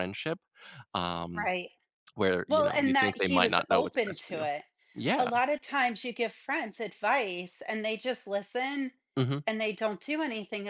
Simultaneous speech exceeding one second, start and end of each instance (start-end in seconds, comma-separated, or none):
2.5-4.5